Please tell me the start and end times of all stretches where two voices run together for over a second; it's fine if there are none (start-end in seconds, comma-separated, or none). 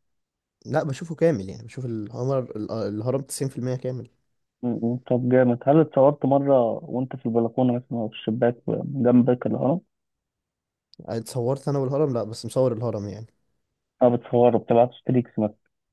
none